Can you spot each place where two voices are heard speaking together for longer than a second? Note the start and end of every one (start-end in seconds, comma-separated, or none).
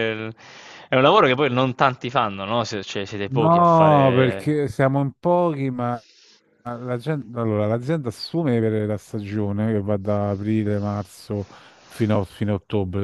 3.3-4.6